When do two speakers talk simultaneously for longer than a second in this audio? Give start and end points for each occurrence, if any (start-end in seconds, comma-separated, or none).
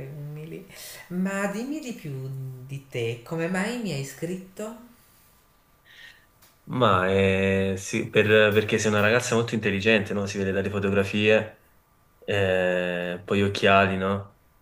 none